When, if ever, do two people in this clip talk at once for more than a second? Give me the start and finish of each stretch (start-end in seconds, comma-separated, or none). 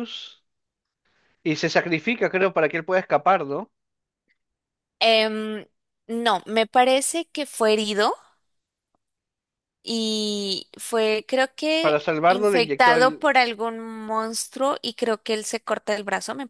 11.8-13.2